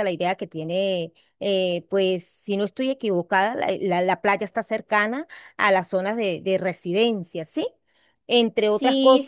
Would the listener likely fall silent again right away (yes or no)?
no